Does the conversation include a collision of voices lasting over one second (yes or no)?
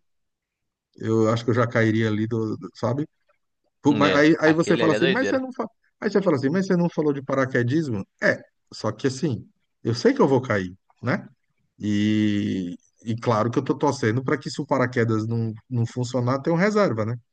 yes